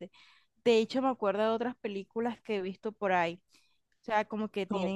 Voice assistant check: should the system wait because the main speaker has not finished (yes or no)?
yes